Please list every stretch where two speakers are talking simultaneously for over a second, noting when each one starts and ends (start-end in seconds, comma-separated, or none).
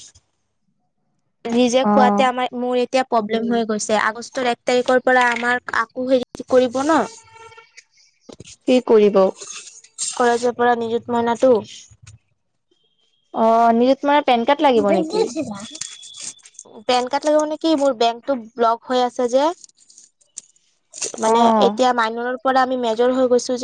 none